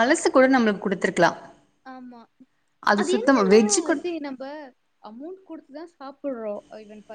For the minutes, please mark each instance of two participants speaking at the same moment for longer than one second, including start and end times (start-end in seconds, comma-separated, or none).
none